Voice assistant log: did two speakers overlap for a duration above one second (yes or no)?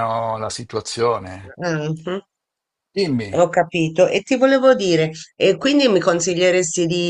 no